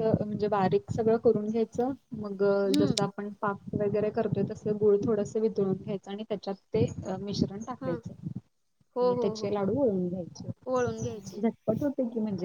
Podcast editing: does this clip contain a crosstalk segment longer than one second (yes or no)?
no